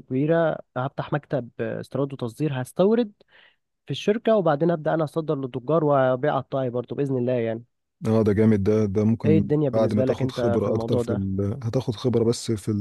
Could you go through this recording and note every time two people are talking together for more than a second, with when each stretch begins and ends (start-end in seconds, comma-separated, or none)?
9.2-11.2